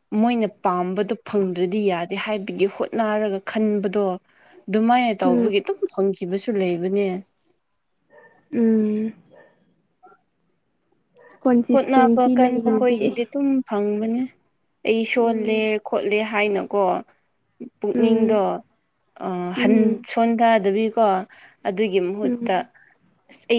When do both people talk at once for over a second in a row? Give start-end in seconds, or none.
11.7-13.1